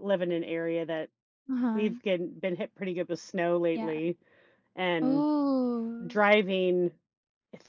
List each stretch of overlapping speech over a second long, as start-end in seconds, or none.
none